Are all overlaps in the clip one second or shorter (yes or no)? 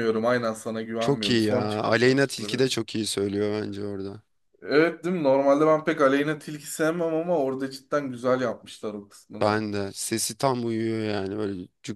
no